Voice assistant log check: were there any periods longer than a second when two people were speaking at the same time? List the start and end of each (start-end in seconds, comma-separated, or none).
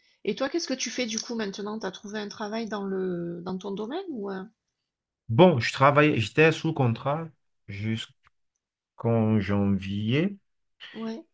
none